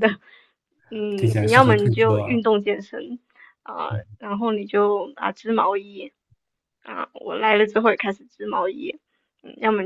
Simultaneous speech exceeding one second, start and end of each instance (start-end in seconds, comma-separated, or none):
1.2-2.4